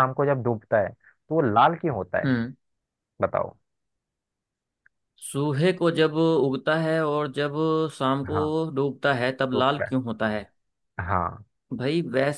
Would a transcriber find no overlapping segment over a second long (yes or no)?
yes